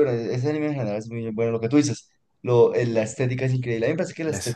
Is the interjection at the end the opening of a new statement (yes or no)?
no